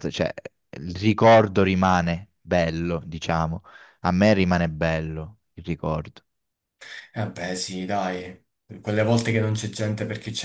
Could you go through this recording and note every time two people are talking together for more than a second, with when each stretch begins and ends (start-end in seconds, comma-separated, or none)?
none